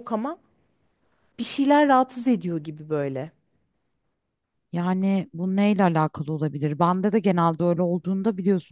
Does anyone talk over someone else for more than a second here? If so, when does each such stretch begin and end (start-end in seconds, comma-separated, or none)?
none